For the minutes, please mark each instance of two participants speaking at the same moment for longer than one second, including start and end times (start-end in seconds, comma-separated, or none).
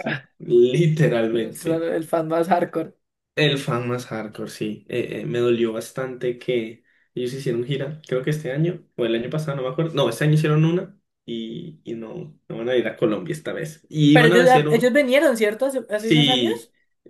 none